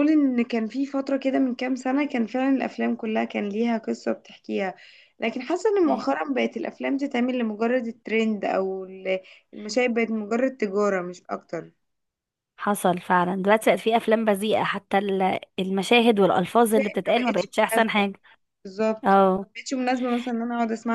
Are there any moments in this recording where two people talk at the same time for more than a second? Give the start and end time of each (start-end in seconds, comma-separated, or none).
16.7-18.1